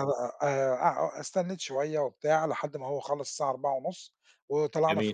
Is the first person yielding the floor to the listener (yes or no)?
no